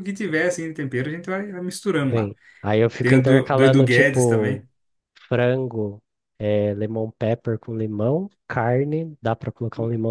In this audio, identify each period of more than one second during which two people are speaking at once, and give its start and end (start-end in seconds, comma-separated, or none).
3.0-4.6